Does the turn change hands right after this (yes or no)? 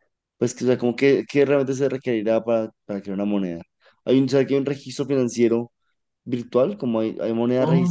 yes